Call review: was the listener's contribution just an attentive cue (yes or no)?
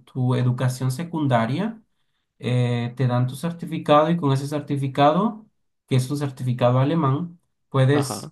yes